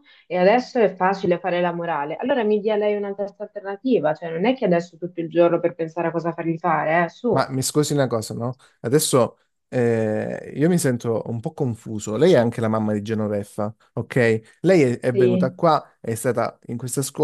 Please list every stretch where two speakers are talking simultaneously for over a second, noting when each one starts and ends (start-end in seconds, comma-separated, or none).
none